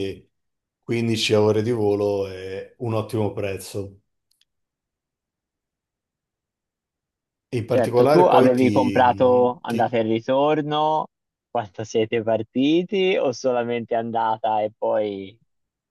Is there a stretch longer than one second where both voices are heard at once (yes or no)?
yes